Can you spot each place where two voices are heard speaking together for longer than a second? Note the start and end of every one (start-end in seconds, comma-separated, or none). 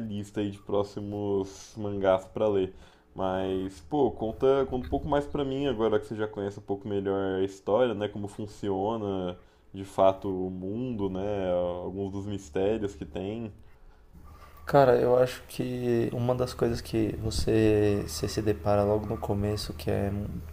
none